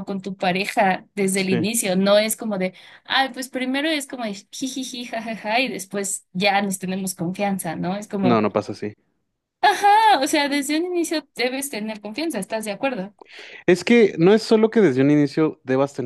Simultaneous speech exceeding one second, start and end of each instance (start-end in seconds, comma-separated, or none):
none